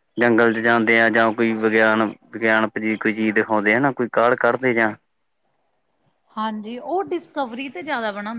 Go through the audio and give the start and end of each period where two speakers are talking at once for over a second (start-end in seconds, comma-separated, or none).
none